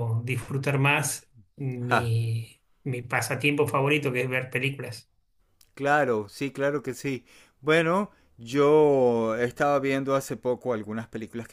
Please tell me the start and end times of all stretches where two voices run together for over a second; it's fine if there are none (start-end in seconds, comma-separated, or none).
none